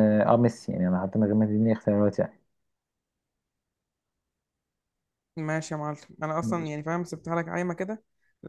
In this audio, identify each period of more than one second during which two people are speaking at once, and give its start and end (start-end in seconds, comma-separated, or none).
none